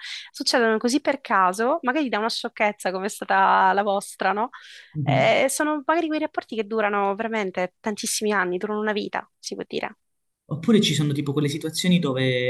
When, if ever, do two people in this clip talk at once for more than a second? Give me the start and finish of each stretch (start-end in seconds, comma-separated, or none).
none